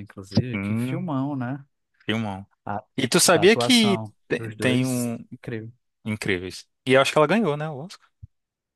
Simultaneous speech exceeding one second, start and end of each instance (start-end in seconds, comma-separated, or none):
3.3-5.2